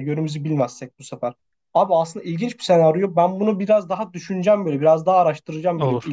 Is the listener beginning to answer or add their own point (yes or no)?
no